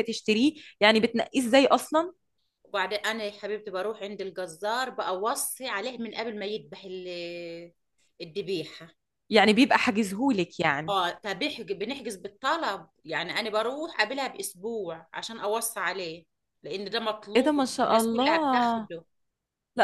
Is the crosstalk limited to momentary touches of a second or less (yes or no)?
no